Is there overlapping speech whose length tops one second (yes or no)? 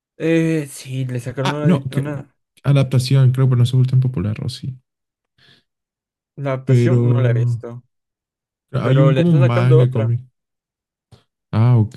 yes